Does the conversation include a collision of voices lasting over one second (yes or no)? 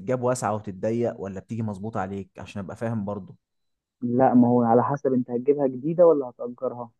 no